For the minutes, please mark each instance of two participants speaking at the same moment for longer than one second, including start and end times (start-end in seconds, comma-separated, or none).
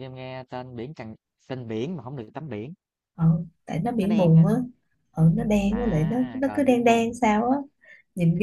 5.7-7.2